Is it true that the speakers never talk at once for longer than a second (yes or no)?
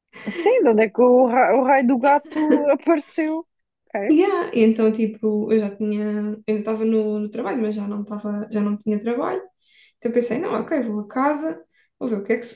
yes